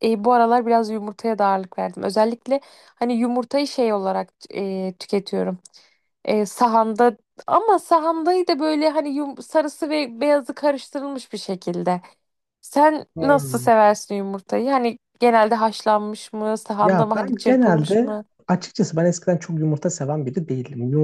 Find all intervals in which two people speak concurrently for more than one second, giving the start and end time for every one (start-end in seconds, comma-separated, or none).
16.8-18.2